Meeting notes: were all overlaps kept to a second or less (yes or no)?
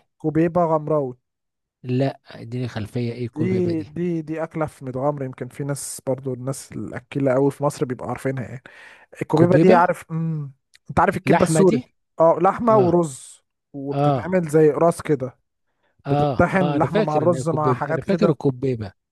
no